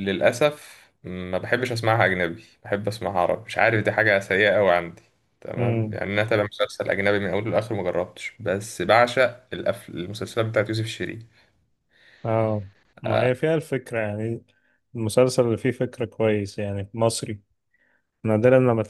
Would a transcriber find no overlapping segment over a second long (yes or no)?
yes